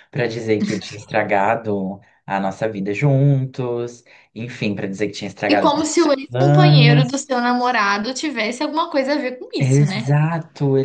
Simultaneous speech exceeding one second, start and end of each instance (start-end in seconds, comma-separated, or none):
5.5-7.2